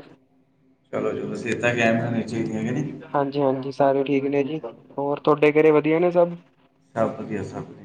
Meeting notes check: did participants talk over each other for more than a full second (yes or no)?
no